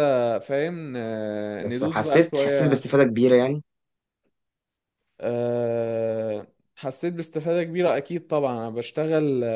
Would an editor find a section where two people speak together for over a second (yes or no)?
yes